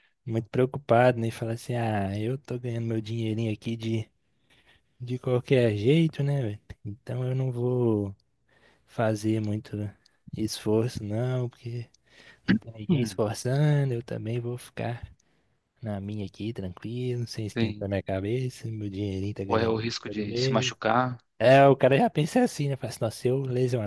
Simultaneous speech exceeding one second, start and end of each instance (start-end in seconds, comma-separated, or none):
19.4-20.7